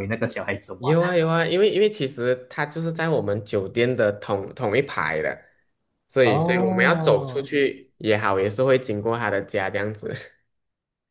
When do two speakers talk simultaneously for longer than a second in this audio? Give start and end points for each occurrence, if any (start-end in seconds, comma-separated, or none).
6.2-7.5